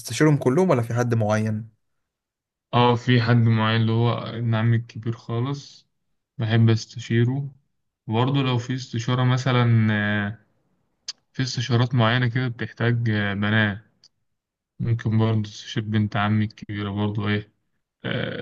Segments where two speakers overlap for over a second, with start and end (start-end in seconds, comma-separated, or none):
none